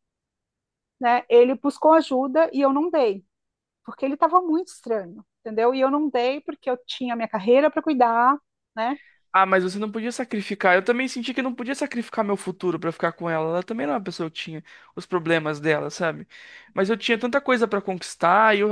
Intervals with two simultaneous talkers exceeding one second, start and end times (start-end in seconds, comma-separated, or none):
none